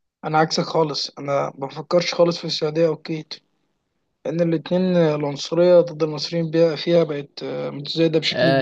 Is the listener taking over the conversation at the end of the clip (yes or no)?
yes